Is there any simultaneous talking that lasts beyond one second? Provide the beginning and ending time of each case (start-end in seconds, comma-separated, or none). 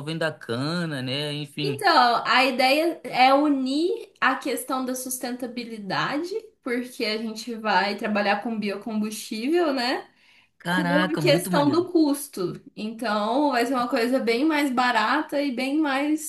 10.7-11.9